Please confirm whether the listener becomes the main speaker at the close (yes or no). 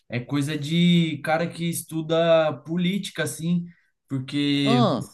no